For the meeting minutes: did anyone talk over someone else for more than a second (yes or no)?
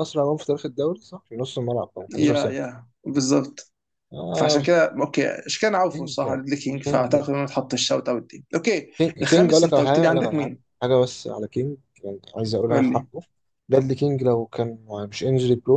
yes